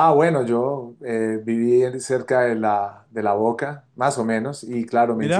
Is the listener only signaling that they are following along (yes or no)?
yes